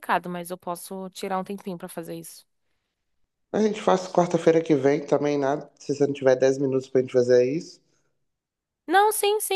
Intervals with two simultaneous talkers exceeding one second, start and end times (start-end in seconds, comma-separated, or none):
none